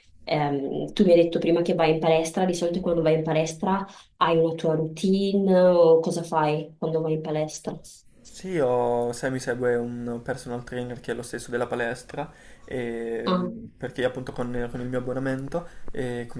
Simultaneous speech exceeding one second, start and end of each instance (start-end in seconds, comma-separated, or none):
none